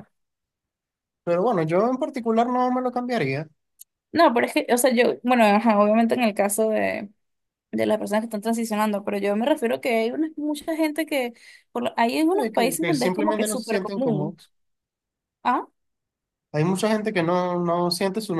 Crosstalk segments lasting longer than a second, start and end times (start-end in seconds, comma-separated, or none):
12.3-14.4